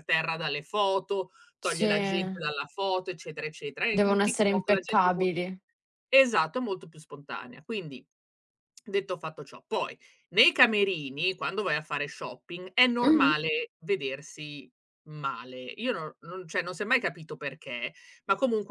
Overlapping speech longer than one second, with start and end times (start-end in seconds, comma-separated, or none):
3.9-5.4